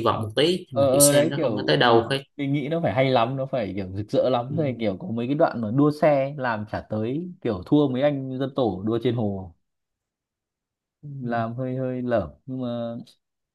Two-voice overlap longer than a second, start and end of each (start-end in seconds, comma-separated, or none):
0.7-2.2